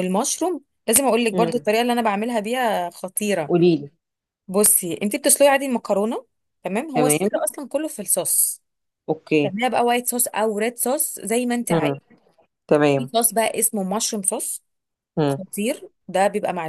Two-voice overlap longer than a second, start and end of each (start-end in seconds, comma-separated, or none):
none